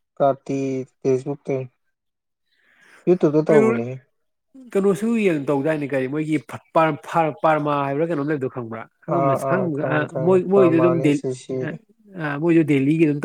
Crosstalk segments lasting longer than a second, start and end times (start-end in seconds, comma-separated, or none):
9.1-11.2